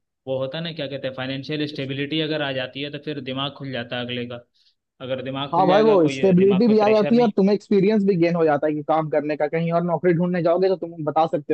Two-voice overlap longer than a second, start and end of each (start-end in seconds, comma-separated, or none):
5.5-7.3